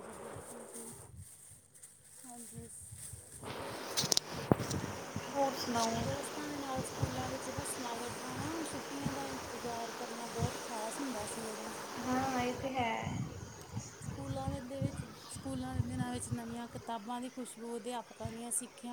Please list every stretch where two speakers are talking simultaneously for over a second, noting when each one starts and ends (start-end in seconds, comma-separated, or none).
none